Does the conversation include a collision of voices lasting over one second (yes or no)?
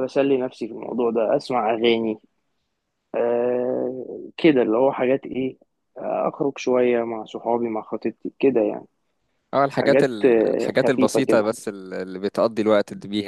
yes